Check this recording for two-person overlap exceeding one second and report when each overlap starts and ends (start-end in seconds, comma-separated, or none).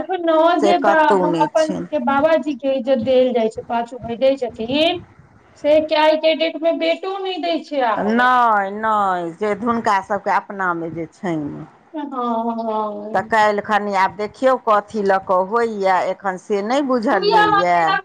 none